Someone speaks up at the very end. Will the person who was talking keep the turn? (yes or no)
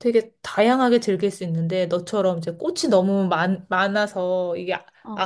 yes